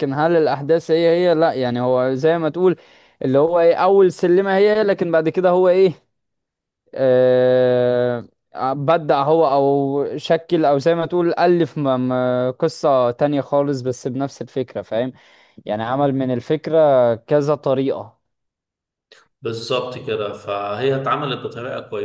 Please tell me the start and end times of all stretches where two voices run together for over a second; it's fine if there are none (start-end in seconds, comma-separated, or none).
none